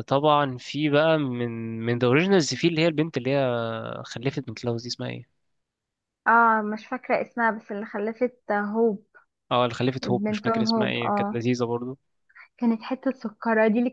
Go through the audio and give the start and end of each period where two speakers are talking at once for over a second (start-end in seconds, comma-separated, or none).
10.0-11.4